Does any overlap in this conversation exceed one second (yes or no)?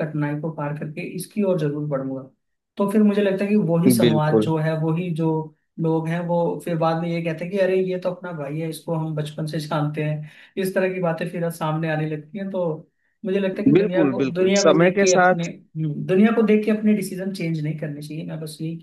yes